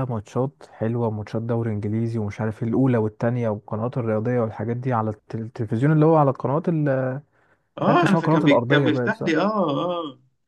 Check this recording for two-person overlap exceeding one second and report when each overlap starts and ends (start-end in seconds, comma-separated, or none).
7.8-9.3